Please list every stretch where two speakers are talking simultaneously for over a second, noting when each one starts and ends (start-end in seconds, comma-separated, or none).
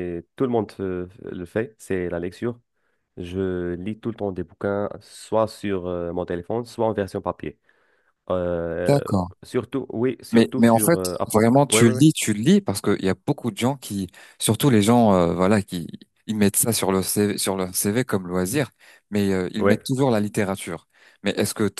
10.3-12.0